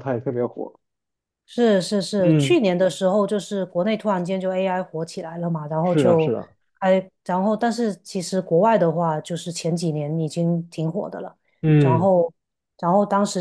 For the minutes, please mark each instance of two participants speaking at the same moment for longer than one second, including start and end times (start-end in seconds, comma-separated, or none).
none